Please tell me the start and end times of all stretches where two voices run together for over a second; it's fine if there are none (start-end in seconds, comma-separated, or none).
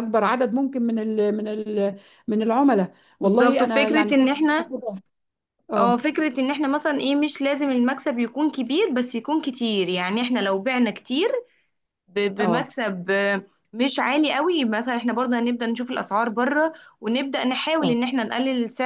3.2-4.7